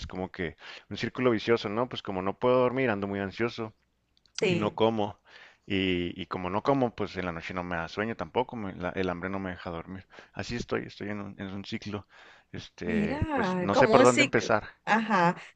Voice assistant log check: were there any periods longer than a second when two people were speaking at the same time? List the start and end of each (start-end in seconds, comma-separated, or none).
12.8-14.7